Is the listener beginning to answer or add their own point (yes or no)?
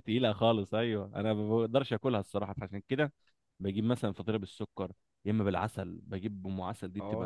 no